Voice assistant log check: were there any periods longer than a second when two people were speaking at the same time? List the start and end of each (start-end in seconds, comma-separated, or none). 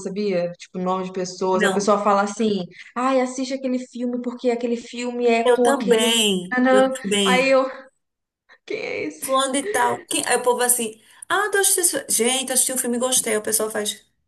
5.4-7.5